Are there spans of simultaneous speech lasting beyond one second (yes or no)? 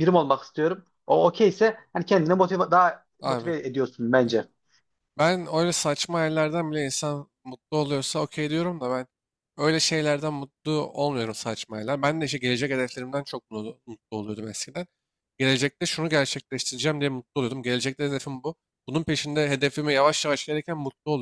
no